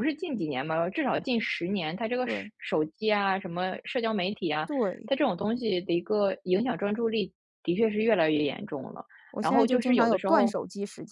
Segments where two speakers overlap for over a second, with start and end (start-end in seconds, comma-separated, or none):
9.3-10.6